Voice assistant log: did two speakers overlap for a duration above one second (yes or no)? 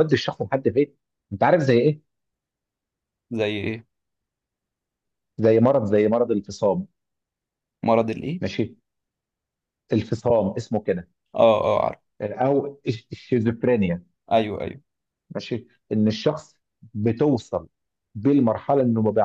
no